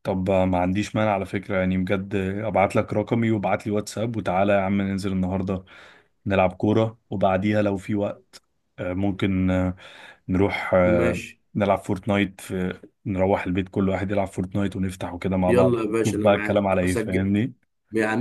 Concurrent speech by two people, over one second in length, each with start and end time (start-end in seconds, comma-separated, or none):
15.5-17.3